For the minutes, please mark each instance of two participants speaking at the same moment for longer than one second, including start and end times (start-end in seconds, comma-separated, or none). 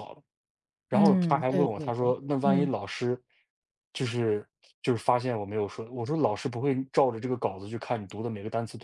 0.9-2.7